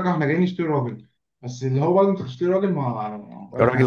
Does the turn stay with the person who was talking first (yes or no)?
yes